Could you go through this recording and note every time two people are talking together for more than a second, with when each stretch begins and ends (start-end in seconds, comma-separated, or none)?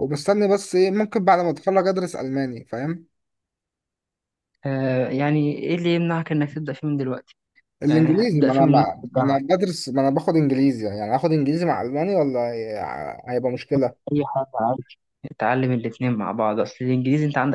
7.9-9.4